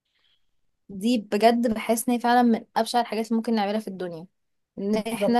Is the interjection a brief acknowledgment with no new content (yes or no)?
yes